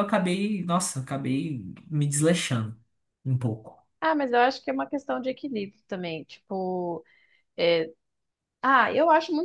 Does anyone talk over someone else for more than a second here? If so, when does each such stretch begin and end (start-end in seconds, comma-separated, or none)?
none